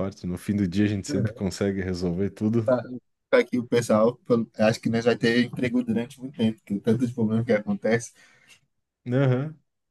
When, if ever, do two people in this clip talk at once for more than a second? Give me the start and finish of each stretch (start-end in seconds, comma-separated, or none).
none